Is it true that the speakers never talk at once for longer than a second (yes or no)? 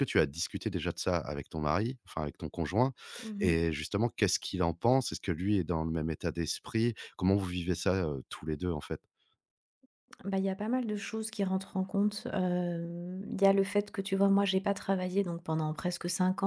yes